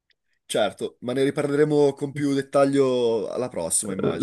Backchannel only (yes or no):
no